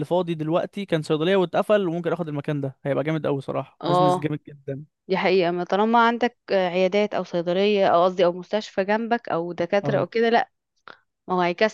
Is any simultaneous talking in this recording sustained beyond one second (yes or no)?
no